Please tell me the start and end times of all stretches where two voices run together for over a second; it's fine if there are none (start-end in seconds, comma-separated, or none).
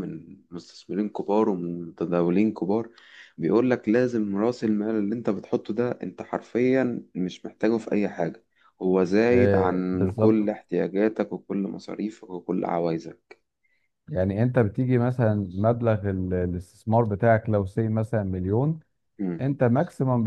9.3-10.6